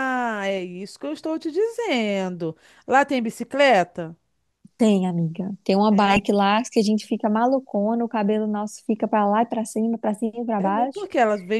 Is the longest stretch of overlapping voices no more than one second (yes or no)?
yes